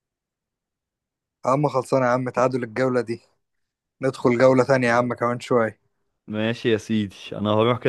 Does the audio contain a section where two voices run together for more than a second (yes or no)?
no